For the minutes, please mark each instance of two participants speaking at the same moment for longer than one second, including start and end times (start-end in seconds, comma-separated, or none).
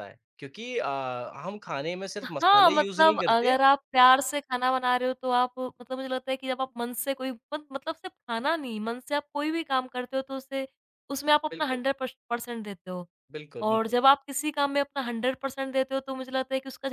2.2-3.6